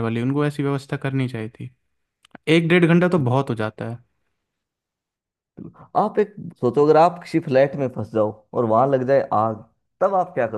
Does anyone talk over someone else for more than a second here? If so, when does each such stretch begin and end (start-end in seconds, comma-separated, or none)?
none